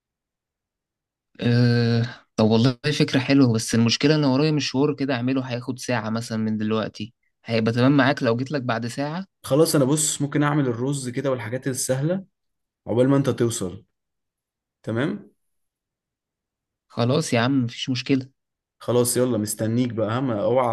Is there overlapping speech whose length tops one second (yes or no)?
no